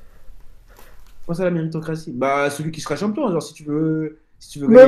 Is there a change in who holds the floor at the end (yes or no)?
yes